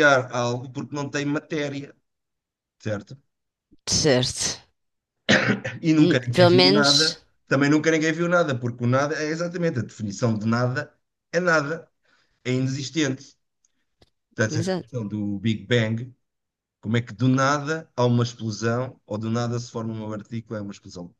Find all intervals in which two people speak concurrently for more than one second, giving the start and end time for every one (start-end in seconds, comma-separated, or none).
6.0-7.2